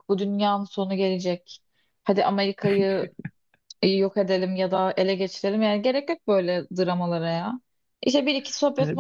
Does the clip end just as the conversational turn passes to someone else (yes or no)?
no